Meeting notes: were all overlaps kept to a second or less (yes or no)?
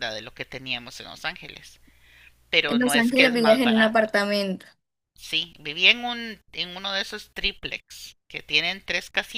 no